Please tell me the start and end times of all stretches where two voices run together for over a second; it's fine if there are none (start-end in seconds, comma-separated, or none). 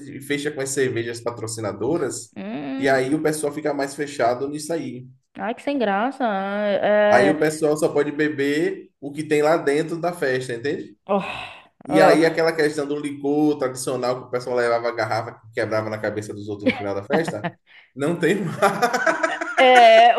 none